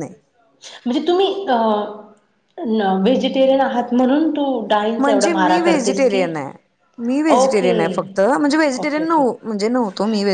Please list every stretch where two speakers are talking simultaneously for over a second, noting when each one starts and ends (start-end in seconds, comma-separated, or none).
none